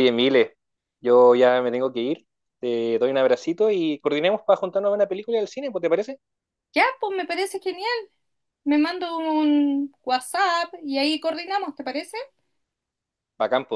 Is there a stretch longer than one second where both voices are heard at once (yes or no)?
no